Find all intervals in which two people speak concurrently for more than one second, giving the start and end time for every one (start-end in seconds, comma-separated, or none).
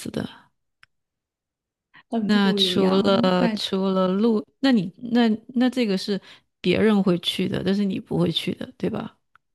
2.2-3.6